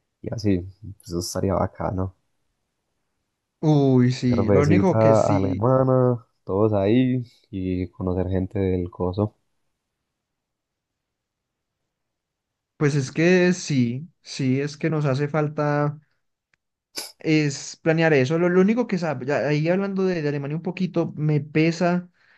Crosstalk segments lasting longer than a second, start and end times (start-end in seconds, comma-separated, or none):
4.3-5.7